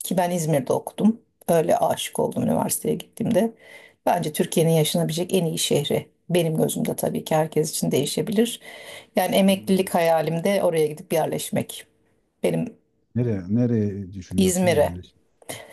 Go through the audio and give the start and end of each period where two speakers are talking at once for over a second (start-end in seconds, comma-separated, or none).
none